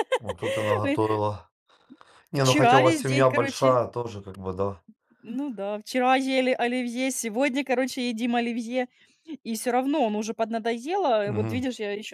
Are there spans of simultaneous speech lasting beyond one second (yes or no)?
yes